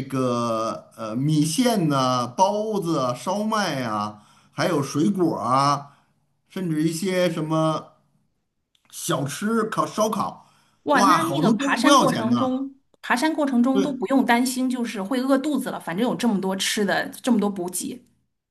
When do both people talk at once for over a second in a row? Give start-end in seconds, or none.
10.9-12.6